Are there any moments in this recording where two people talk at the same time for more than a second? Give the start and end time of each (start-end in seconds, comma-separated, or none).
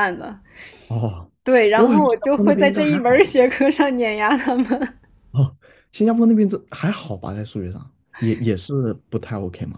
1.7-3.3